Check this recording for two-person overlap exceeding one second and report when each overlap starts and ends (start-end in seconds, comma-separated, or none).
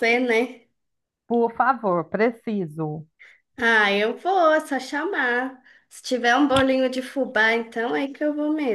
none